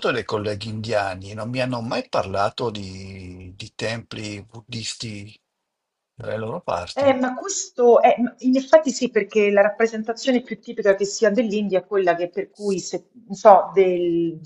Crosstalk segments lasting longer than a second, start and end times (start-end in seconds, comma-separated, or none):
none